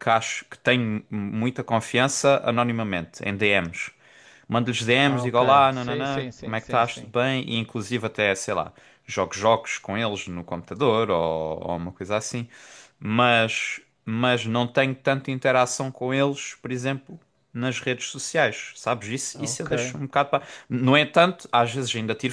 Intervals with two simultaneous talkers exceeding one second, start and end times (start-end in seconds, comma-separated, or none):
5.1-7.1